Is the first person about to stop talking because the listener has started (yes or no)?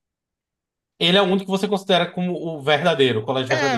yes